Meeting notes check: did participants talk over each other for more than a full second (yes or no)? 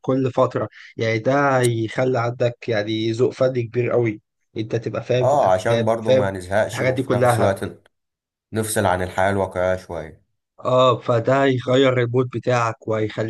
yes